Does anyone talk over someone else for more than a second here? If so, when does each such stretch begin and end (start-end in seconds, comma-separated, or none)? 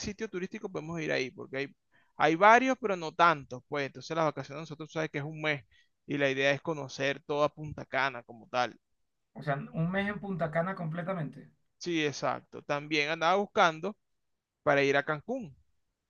none